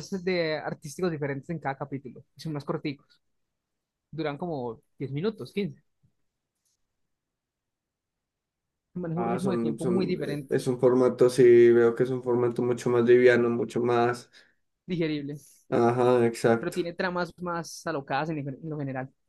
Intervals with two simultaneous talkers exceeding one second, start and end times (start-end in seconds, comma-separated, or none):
9.1-10.5